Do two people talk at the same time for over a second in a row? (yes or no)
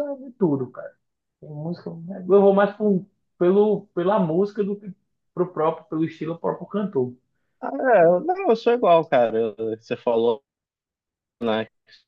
no